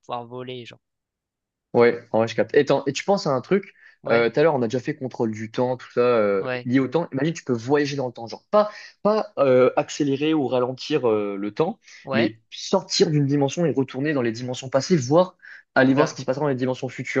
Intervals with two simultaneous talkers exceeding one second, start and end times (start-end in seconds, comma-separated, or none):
none